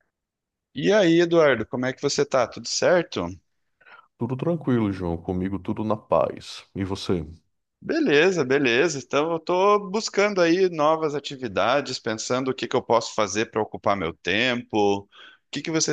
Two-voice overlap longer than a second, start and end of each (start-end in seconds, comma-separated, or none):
none